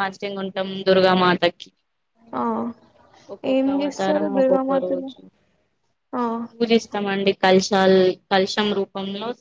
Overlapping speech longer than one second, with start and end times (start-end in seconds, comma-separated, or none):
3.5-5.1